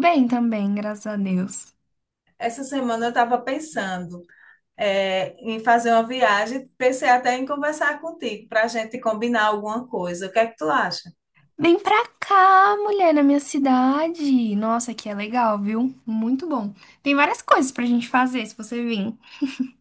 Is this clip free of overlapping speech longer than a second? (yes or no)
yes